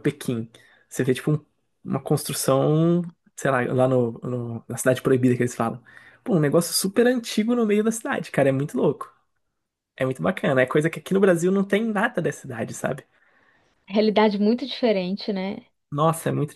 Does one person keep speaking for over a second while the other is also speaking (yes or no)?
no